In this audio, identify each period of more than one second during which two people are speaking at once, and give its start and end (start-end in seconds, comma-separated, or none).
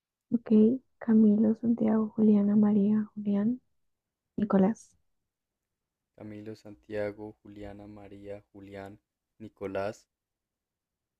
none